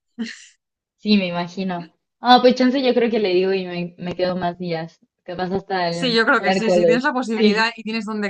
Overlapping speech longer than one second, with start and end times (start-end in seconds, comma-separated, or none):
5.9-7.7